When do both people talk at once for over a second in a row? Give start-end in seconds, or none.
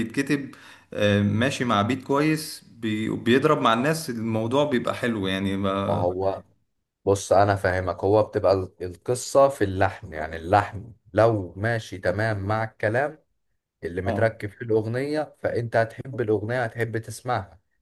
none